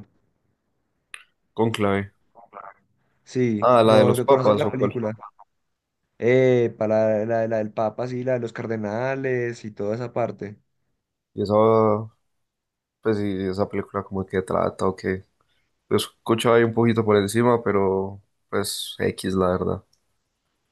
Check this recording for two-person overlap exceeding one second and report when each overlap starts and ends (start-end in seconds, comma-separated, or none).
3.6-5.0